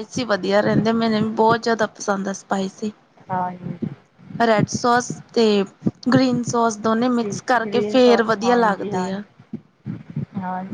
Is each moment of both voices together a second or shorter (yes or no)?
no